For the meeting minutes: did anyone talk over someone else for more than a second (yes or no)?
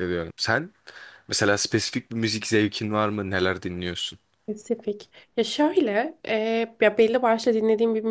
no